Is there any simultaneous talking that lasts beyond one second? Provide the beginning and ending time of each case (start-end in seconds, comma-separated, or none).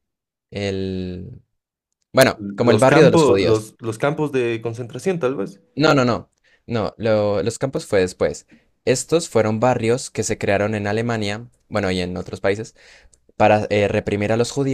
2.3-3.7